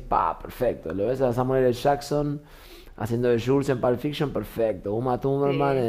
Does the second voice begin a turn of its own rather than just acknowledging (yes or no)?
no